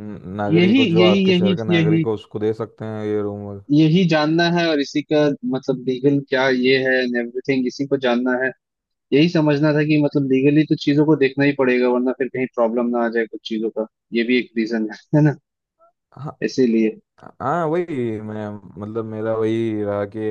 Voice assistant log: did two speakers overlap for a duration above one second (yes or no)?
yes